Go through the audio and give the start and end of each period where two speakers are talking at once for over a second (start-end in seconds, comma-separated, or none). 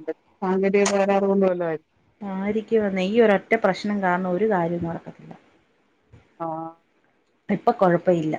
none